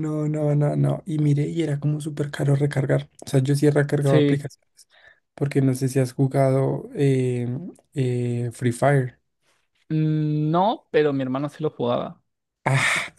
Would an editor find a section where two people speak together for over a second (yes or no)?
no